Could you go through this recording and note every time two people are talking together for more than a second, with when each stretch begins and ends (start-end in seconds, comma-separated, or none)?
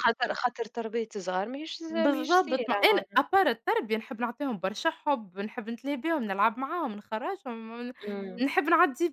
1.9-3.2